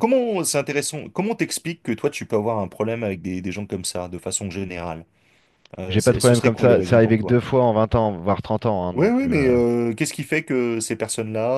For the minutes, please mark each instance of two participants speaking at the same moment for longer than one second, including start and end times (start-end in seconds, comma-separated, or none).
5.9-7.4